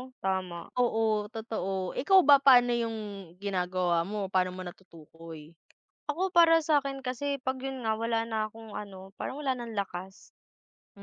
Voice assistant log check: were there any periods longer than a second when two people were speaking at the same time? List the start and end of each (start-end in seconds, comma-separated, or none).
none